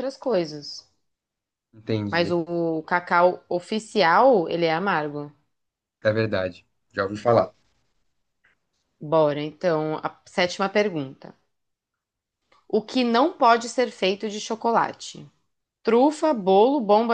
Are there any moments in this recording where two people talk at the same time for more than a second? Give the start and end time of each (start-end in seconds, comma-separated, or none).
none